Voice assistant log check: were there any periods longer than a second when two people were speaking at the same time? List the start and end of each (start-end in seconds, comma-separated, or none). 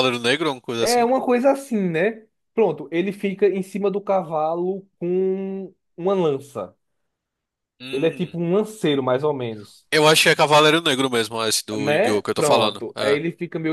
11.8-13.2